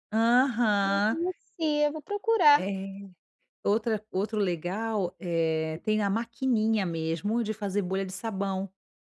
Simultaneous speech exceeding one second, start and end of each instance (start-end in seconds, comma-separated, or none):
none